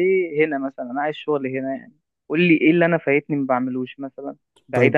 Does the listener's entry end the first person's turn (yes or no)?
yes